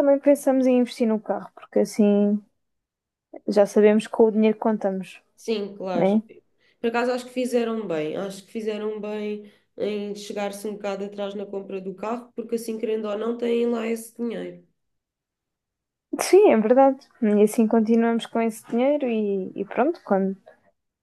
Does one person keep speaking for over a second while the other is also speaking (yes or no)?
no